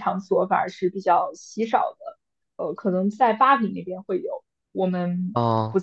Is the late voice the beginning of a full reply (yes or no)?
no